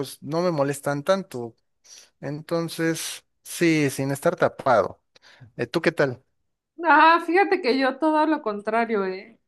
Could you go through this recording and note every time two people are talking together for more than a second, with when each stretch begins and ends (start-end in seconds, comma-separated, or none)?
none